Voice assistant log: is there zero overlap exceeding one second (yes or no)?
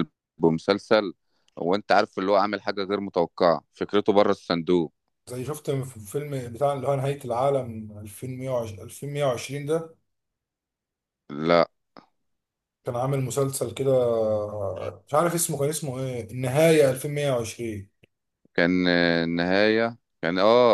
yes